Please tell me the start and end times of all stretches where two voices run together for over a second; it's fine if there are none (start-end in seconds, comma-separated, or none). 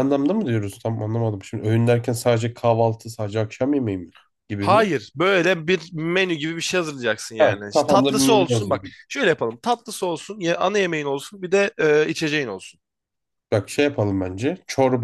7.4-8.8